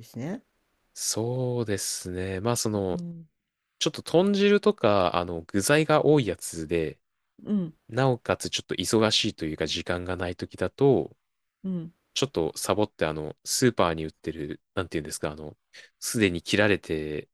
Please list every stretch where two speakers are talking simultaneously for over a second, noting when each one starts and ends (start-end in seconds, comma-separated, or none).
none